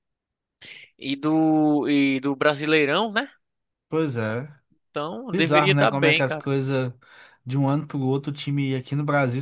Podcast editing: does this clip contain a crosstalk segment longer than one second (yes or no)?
yes